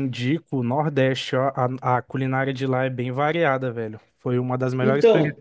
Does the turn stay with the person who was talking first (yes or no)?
yes